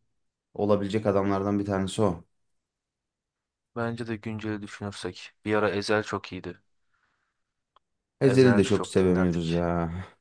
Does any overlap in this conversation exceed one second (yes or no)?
yes